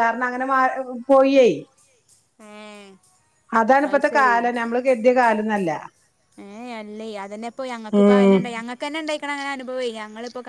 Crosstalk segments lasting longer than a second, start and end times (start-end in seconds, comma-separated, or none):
none